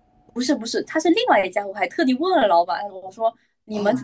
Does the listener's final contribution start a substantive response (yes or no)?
no